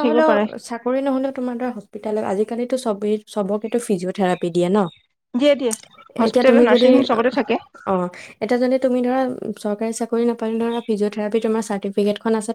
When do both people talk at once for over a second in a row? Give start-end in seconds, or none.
none